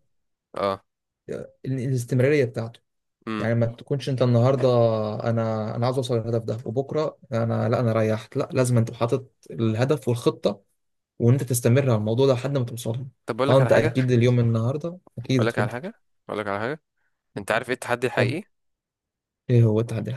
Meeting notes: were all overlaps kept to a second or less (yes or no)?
yes